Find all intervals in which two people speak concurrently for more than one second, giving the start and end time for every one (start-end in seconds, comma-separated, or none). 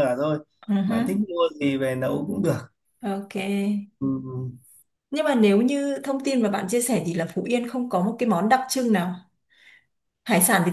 none